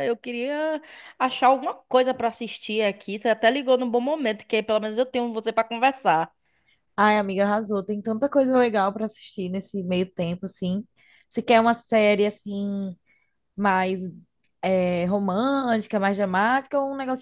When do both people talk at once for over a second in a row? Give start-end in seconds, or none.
none